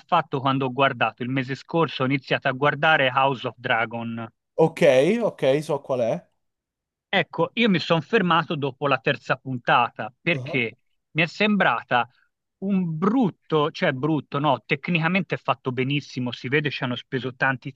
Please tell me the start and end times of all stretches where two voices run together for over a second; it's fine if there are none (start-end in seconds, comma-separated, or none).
none